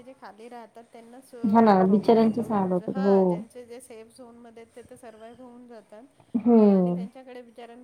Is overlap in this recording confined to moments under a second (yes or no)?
no